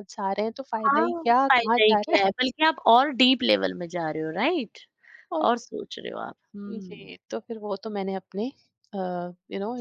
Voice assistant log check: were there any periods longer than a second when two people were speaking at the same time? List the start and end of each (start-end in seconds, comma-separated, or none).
0.9-2.3